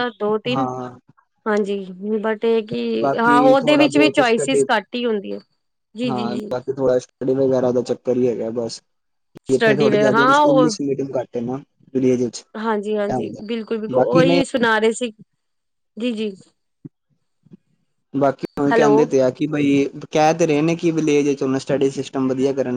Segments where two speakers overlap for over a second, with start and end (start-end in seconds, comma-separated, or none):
3.2-4.6